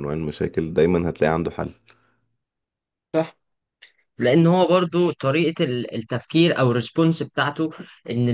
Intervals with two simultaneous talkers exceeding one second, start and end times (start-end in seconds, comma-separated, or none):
none